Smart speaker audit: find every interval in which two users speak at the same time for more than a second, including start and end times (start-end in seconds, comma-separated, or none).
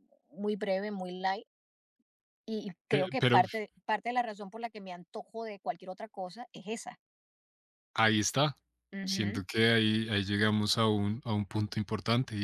none